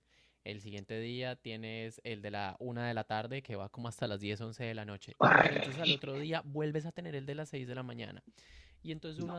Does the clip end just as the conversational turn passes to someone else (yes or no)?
no